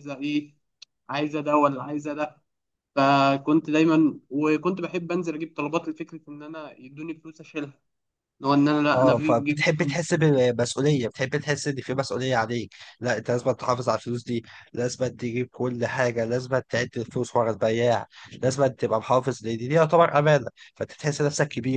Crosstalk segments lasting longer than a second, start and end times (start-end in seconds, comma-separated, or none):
8.9-10.2